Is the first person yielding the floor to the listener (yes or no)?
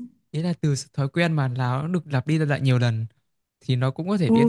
yes